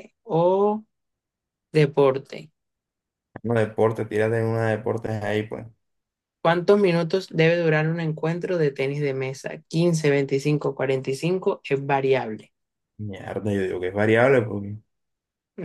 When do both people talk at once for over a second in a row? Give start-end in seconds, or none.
none